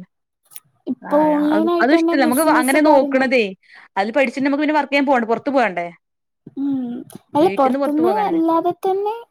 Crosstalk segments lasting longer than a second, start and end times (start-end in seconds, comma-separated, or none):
1.1-3.3